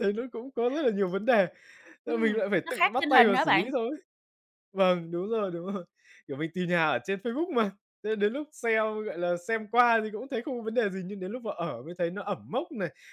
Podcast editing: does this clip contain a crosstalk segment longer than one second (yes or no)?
yes